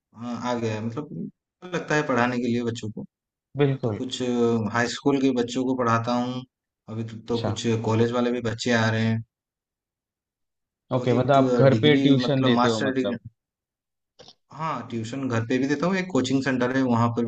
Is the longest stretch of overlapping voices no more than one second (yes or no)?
no